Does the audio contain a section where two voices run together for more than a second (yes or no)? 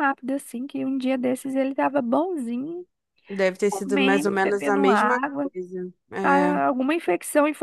yes